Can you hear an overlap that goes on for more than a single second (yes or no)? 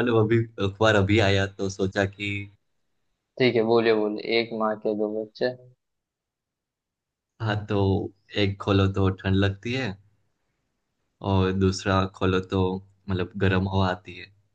no